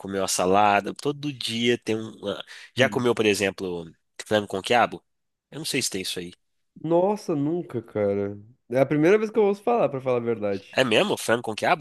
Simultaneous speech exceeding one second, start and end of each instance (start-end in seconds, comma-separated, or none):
none